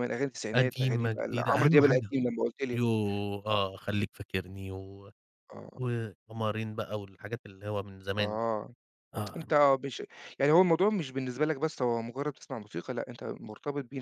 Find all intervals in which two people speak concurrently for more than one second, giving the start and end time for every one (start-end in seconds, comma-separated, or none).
0.5-2.1